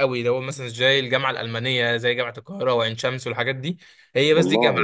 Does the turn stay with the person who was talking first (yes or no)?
yes